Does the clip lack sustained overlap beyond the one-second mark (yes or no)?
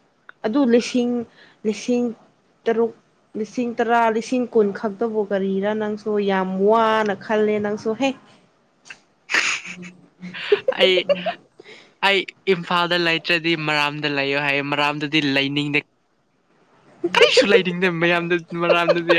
yes